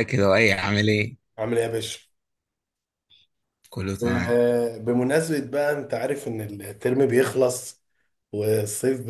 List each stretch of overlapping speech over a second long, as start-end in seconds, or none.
none